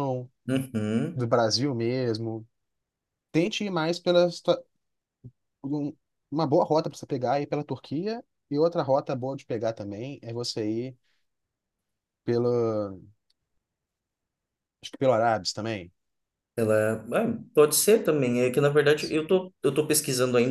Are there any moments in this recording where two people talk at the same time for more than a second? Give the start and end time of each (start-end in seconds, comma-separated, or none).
none